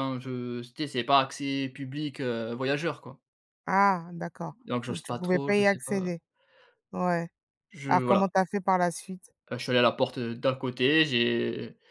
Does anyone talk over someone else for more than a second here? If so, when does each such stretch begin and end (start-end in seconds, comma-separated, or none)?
4.7-6.1